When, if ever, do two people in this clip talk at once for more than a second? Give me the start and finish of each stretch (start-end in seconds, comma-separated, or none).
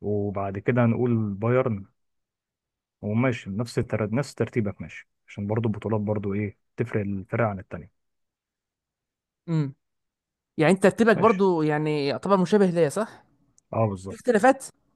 none